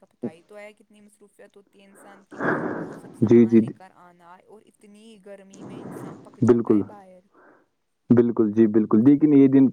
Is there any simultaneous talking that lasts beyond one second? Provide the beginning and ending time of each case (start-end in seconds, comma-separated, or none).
none